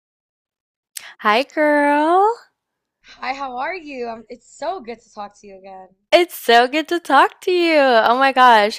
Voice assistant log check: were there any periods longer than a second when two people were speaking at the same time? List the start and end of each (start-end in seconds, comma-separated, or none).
none